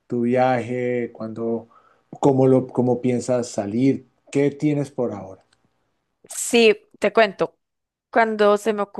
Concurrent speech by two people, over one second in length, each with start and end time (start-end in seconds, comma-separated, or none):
none